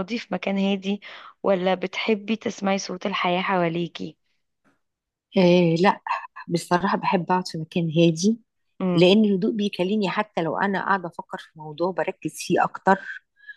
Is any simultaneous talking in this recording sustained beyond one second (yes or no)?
no